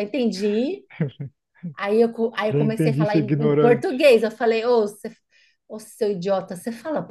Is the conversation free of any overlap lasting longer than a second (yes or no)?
no